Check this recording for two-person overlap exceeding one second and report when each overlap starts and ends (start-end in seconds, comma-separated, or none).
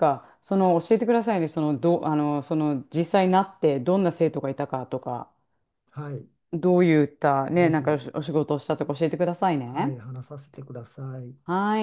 none